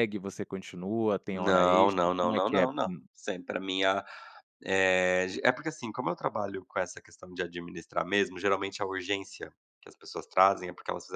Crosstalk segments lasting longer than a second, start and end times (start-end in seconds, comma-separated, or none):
1.3-3.0